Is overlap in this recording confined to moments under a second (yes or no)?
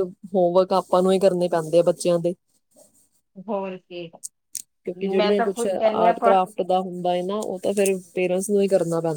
yes